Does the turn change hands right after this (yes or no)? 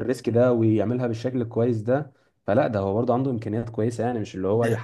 yes